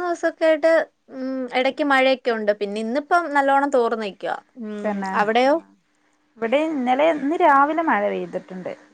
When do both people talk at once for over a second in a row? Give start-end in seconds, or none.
none